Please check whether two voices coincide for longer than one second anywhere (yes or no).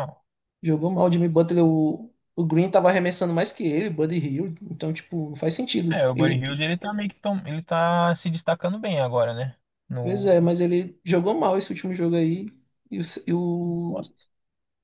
no